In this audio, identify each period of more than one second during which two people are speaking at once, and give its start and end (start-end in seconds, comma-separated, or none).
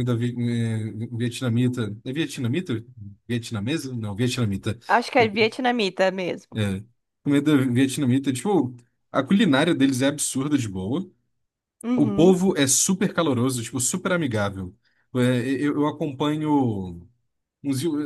none